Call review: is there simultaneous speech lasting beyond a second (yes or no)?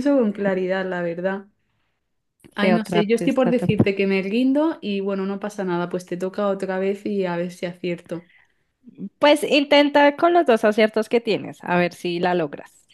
yes